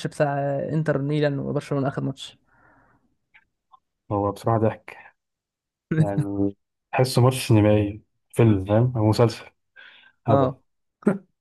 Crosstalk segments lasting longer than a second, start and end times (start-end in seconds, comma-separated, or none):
none